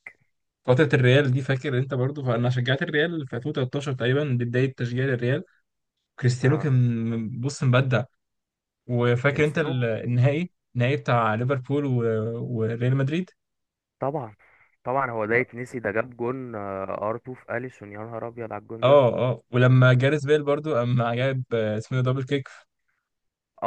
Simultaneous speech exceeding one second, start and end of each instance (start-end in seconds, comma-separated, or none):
none